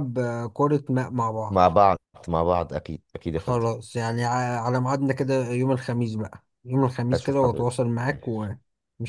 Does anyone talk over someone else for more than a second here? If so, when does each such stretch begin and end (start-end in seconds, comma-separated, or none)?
7.1-8.5